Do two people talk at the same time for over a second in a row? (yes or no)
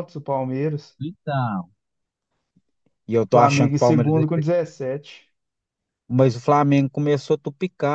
yes